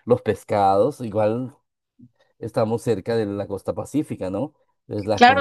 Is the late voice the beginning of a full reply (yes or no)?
yes